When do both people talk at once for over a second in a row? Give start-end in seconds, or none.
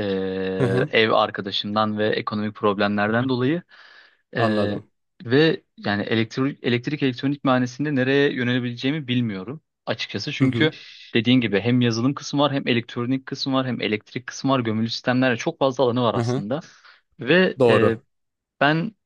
none